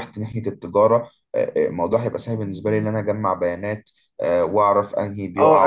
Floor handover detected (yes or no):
yes